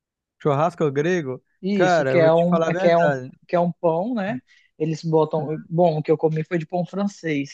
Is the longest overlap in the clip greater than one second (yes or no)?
yes